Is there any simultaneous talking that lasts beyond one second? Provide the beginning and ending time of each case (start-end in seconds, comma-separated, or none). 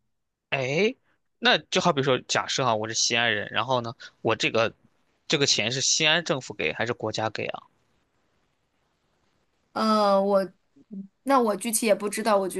none